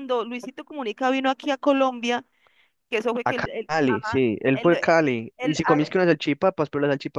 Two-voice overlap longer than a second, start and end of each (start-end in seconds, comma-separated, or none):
3.2-4.7